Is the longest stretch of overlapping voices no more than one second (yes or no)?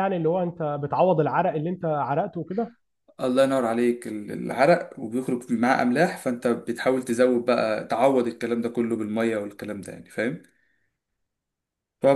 yes